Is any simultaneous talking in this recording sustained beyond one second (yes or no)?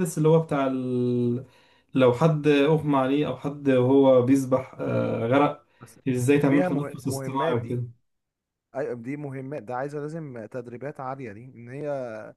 yes